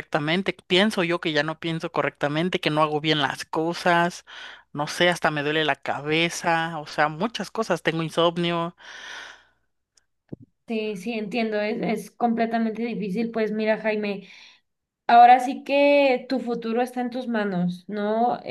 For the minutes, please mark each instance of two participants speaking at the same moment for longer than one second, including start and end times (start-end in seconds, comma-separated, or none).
none